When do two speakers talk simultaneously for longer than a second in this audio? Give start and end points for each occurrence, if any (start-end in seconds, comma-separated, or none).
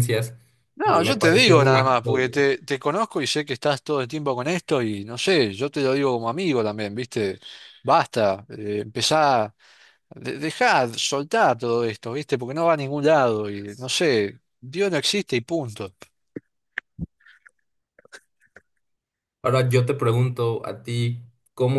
0.8-2.1